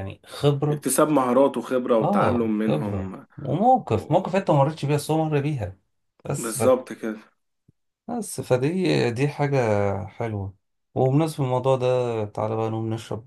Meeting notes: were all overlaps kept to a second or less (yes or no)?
no